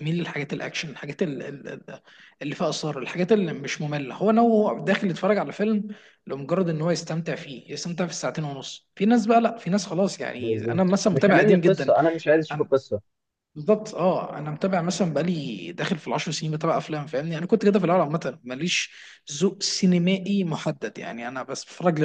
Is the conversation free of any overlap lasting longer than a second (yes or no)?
no